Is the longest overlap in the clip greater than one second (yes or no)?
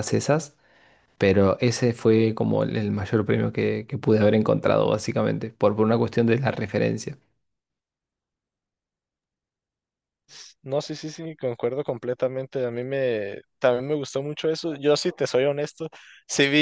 no